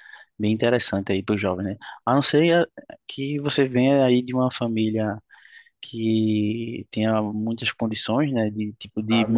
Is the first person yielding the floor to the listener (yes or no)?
no